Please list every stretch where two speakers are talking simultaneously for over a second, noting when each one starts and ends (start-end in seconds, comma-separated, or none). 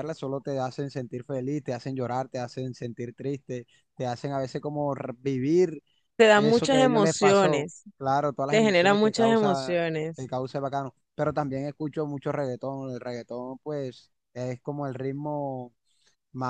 6.3-7.8, 8.5-10.3